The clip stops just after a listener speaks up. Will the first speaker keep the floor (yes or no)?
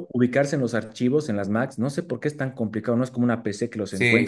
no